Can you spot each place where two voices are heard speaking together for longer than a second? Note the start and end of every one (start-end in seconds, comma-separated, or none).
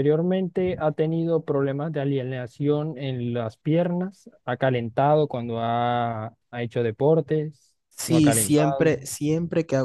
7.9-9.1